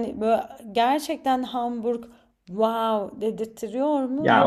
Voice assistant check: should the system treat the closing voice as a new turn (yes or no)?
yes